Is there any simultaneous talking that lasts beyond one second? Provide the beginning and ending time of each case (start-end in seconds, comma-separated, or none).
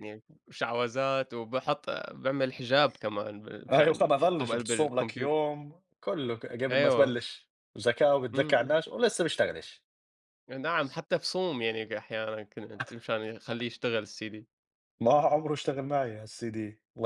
3.7-5.3